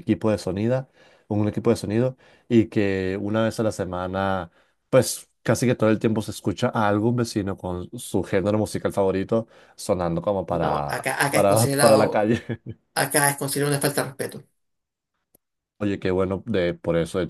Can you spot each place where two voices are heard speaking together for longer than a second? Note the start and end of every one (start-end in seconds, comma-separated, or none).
10.5-12.3